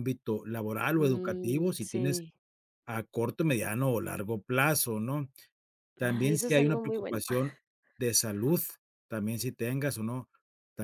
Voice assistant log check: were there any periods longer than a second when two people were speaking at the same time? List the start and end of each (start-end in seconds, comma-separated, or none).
1.0-2.2, 6.0-7.2